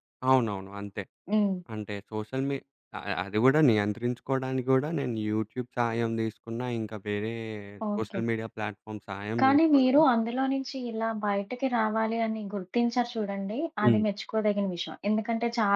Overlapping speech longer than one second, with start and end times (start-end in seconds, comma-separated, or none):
none